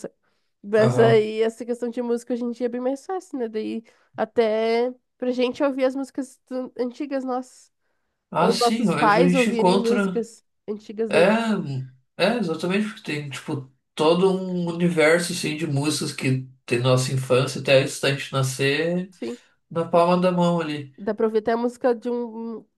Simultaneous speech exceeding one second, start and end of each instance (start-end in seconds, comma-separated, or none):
8.4-10.3